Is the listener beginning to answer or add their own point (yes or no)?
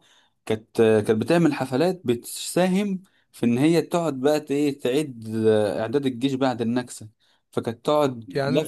no